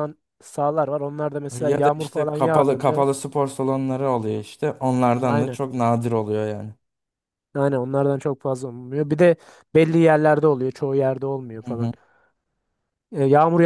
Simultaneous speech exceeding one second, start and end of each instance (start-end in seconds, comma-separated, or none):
1.6-3.1